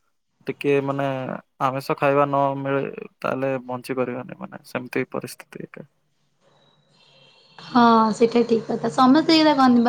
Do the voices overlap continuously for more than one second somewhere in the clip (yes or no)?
no